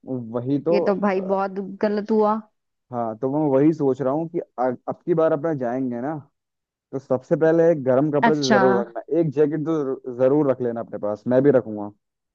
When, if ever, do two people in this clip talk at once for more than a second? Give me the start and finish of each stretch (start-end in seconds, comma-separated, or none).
none